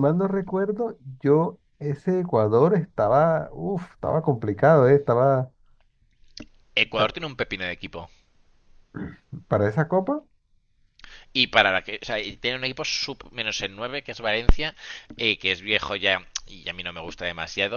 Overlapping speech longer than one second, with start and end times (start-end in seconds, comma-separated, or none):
none